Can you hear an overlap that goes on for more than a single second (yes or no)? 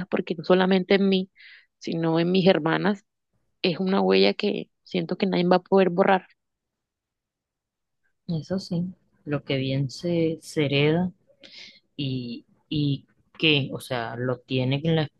no